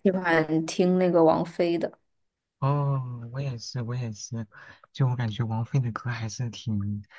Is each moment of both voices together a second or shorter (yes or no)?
yes